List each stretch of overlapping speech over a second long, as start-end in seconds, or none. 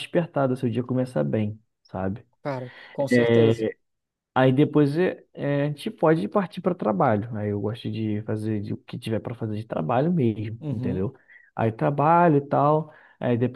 none